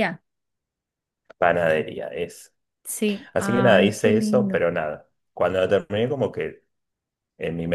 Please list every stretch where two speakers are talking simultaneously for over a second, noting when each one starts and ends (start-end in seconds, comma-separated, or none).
3.3-4.6